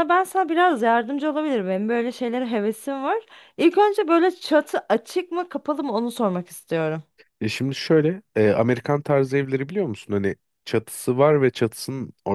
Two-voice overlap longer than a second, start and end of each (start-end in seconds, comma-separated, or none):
none